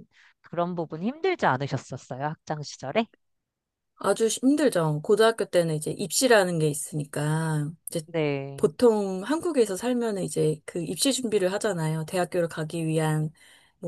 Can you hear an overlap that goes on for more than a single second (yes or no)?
no